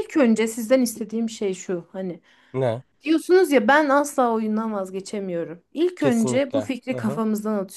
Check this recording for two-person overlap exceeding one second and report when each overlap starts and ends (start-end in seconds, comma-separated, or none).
6.0-7.2